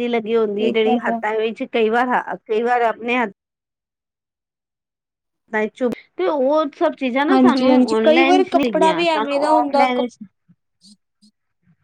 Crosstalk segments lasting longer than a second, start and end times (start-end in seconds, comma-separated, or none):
7.3-10.0